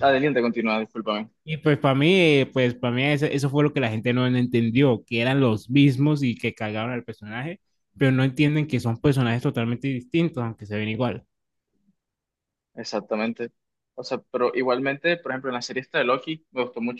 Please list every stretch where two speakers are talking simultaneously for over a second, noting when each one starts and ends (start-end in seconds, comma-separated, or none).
none